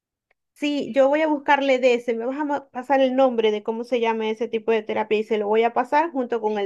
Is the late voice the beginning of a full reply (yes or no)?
no